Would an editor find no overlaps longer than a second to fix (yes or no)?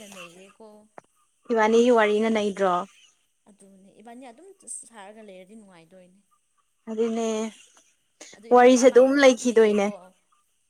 no